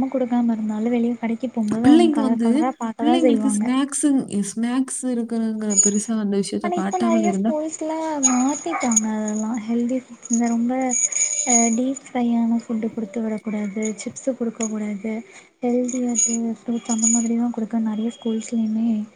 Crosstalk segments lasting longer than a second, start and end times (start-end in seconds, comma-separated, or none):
none